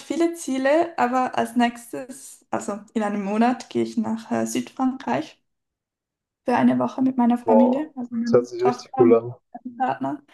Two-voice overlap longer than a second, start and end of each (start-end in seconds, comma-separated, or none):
7.4-9.2